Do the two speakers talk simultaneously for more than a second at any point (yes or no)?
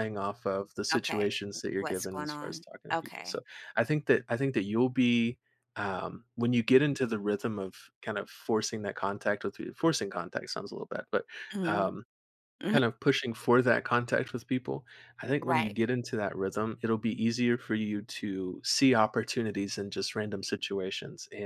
yes